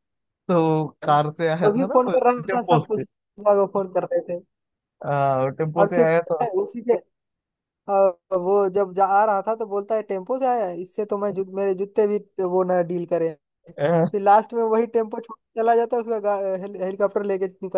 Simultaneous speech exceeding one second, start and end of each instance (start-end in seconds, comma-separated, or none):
1.0-3.0